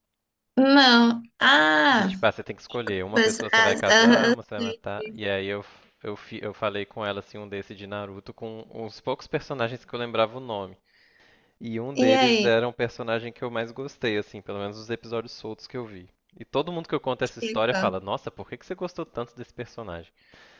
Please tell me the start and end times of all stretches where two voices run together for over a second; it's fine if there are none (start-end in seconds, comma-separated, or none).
3.1-4.8